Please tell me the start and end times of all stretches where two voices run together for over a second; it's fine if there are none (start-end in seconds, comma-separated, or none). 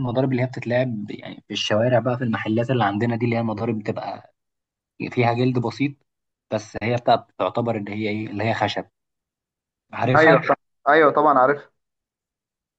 none